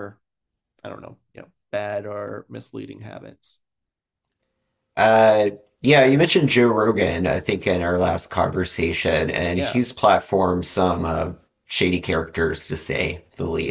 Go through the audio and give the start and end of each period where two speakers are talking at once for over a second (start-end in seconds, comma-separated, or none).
none